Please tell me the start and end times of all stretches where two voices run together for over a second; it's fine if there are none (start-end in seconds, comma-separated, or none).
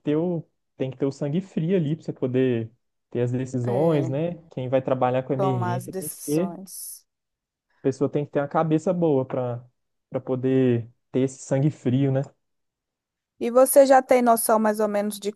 5.3-6.8